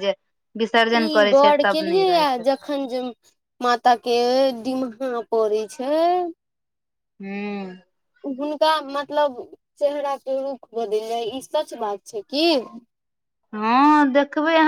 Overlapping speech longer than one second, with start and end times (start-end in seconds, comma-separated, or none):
none